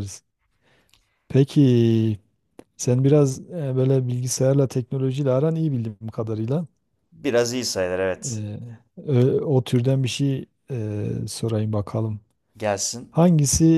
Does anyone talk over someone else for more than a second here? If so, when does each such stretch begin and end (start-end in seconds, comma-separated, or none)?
none